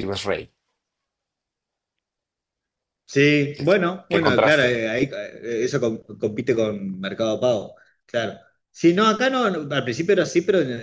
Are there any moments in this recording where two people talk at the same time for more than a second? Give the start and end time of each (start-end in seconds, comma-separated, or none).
3.5-4.8